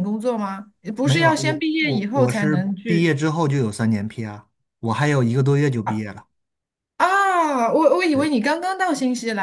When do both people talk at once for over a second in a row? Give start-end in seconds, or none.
1.0-3.1